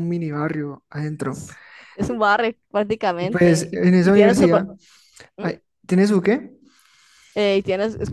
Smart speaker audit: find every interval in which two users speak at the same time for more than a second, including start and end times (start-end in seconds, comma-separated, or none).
3.2-4.6